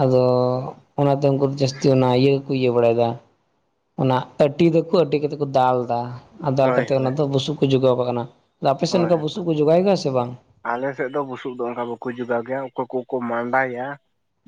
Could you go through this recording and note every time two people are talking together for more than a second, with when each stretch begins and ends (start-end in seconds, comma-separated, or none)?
none